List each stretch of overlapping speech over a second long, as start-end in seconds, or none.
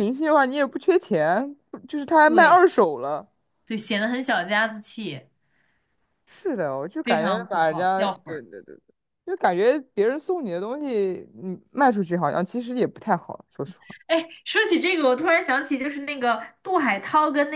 7.0-8.4